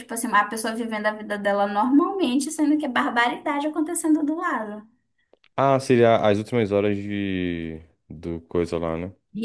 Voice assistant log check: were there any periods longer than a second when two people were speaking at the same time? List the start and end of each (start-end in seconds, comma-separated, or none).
none